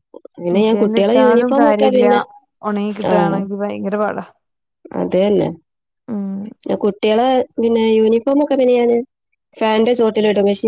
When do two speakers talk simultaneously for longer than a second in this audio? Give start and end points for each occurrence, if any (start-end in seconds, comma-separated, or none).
0.5-2.0